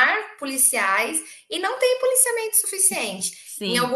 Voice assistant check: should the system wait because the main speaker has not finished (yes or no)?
yes